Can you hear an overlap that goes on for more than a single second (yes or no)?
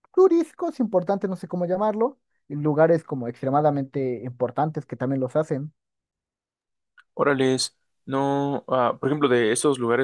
no